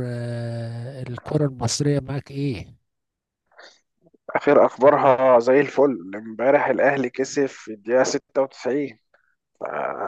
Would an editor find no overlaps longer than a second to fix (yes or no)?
yes